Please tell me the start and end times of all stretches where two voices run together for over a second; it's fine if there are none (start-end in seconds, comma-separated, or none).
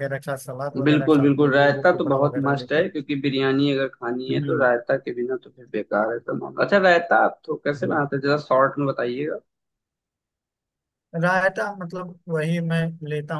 0.8-2.8